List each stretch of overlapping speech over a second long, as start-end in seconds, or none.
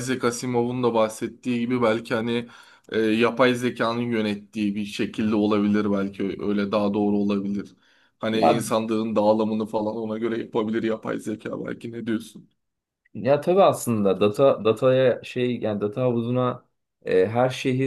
none